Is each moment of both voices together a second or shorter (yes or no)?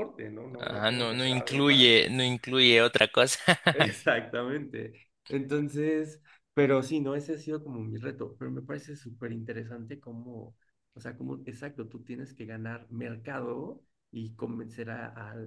no